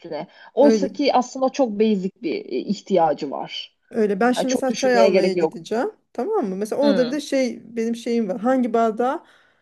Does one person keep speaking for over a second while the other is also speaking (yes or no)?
yes